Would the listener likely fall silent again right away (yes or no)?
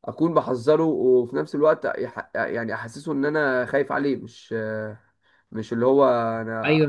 no